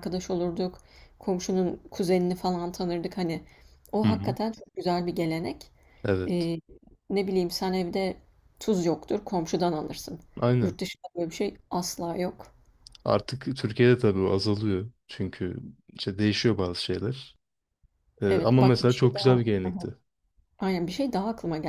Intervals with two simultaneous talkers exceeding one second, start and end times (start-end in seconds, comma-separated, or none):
18.2-19.9